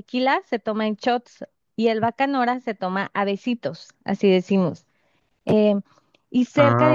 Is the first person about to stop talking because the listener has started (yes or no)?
no